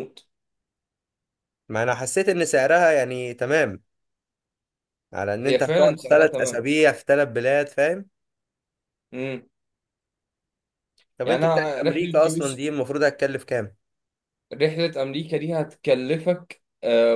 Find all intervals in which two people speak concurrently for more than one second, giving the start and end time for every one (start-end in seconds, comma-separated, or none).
5.4-6.7, 11.2-12.6